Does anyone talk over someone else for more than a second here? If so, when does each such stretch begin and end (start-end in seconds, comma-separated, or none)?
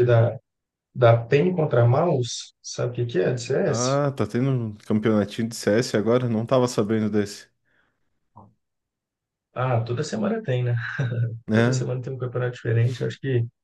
none